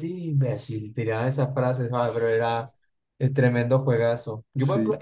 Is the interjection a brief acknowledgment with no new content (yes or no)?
yes